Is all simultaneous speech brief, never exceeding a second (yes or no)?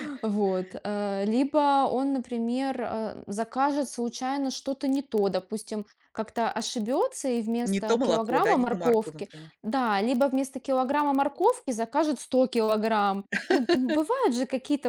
no